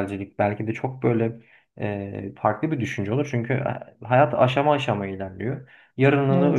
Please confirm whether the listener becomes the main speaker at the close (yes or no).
no